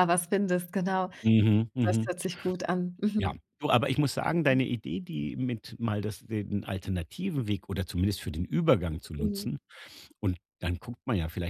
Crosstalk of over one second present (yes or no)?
no